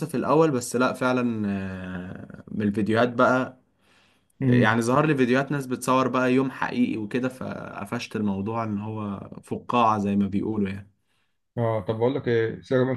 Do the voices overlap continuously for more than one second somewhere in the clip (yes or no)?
no